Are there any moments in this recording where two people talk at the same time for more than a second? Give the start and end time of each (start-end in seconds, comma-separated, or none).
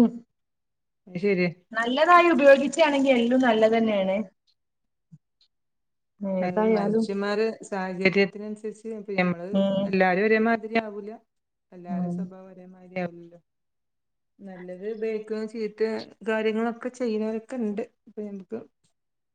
none